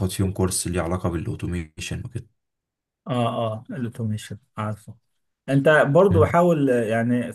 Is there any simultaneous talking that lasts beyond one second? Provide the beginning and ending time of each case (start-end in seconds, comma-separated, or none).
none